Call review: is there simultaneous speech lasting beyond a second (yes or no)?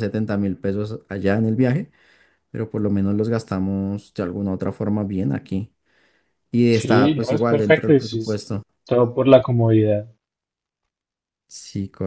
yes